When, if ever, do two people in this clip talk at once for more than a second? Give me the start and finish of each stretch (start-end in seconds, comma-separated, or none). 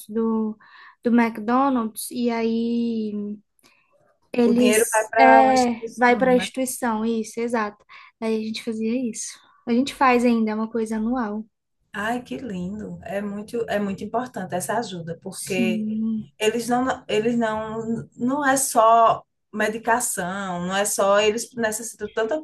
4.4-6.5